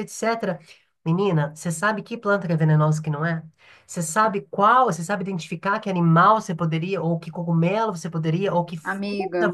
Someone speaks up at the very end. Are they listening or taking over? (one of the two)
taking over